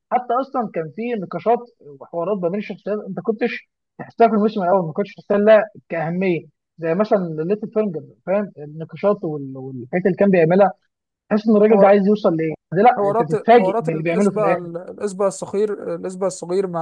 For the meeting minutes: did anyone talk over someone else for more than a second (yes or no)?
yes